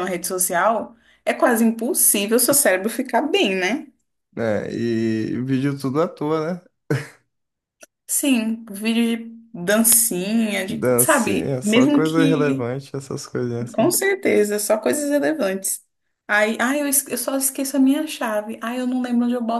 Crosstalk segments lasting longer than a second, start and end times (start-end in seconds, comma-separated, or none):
10.7-12.6